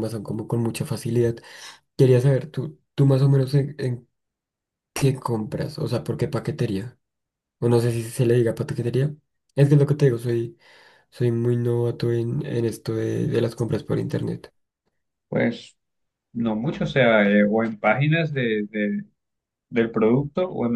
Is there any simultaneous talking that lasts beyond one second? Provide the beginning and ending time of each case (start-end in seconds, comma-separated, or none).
none